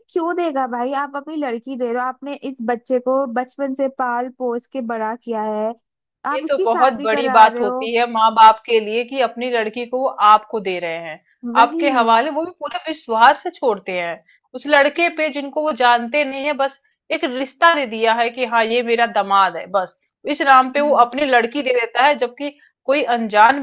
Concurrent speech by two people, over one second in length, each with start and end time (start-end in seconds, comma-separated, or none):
6.3-7.9